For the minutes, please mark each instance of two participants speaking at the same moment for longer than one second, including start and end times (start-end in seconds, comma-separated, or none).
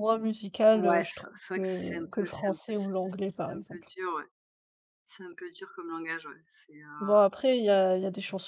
0.7-4.0